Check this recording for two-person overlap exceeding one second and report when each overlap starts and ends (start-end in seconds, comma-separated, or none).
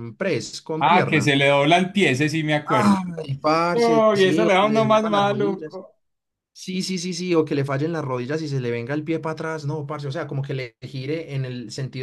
3.7-5.8